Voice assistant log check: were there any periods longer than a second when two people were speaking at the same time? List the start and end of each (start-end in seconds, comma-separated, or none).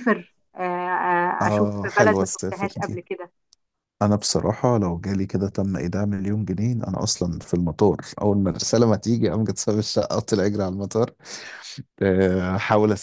1.4-3.0